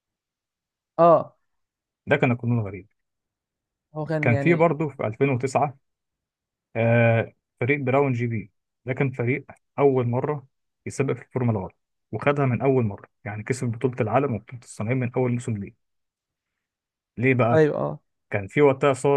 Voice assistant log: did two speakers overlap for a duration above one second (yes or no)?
no